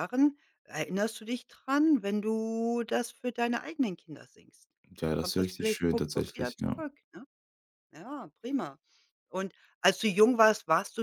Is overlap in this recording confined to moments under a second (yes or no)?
no